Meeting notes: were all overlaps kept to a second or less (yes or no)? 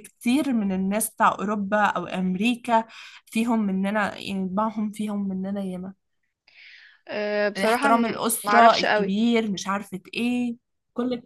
no